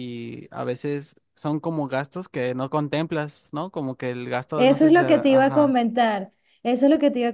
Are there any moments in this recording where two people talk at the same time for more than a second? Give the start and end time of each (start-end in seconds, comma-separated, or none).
4.5-5.8